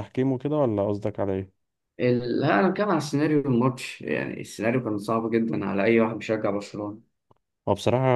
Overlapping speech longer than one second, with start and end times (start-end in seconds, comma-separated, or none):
none